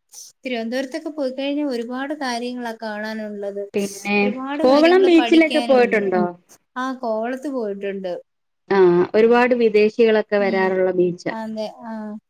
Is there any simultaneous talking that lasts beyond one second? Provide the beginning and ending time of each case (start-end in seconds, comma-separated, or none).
4.6-6.1